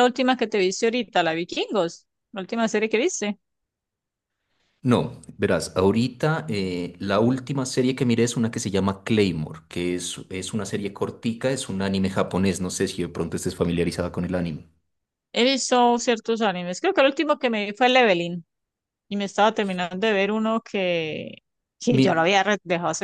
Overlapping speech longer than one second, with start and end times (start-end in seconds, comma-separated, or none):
none